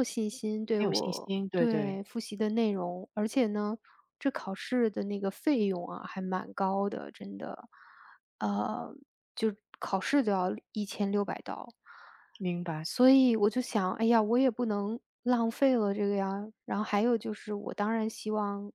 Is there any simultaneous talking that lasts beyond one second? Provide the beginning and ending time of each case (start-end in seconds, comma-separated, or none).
0.7-2.0